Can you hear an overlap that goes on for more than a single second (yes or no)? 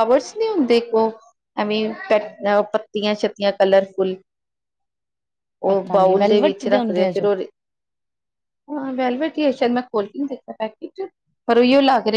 yes